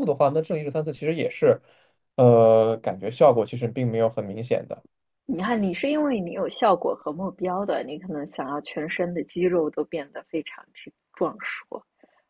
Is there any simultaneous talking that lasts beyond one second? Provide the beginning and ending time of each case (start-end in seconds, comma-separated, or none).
none